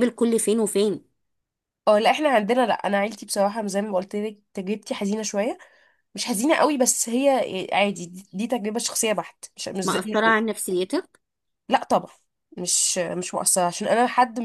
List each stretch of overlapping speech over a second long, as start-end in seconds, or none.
none